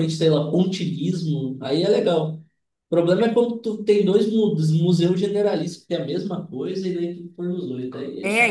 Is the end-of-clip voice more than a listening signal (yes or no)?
yes